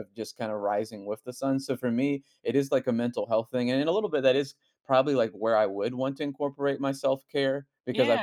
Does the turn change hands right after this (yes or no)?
no